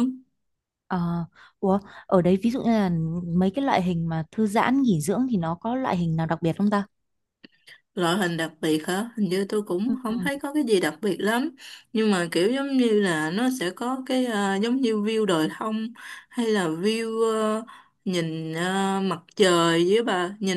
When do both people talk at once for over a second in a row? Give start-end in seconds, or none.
none